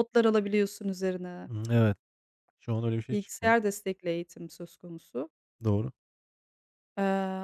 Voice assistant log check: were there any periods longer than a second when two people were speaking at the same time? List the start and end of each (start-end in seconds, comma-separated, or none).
none